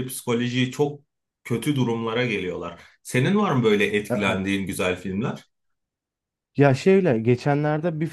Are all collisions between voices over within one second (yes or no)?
yes